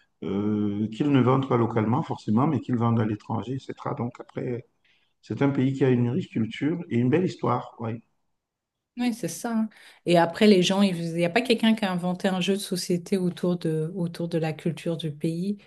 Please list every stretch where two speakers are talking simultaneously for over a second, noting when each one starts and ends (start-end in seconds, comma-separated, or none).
none